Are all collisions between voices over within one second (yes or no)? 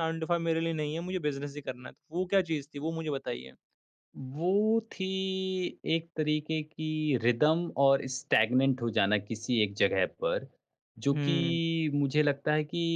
yes